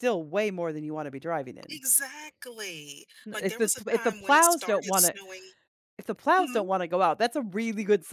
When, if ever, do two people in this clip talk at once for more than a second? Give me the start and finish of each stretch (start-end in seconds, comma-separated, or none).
3.3-5.2